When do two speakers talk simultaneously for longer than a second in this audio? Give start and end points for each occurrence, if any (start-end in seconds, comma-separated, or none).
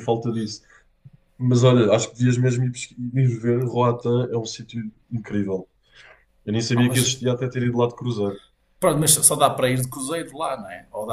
none